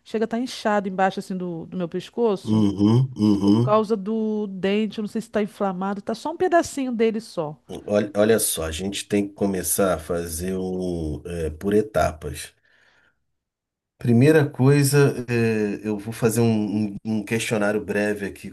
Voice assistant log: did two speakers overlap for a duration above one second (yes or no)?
no